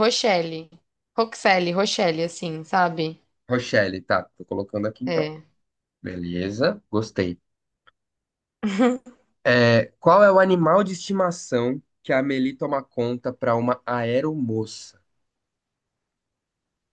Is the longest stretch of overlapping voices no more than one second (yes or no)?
yes